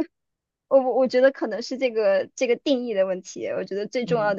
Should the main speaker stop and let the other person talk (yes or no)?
no